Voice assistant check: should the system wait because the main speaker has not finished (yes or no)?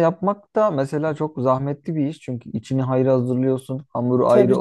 yes